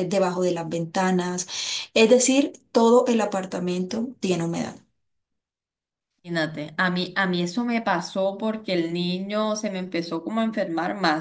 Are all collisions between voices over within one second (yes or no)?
yes